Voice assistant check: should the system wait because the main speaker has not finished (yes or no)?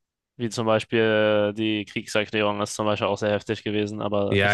no